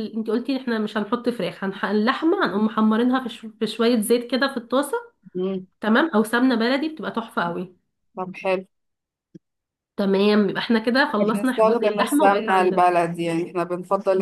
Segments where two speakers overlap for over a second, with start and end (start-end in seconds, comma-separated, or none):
11.2-12.8